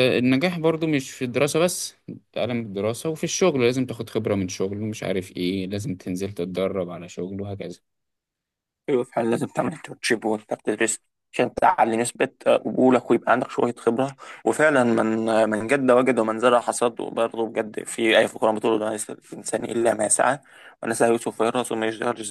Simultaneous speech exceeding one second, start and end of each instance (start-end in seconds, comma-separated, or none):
none